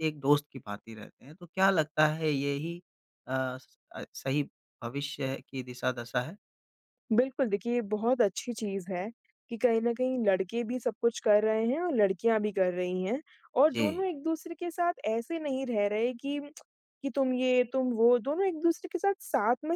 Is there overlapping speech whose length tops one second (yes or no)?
no